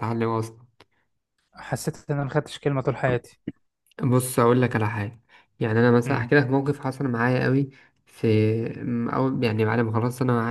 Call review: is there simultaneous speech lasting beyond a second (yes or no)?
no